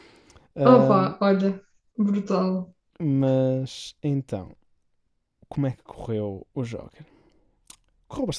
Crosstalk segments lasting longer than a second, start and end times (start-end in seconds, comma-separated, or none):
none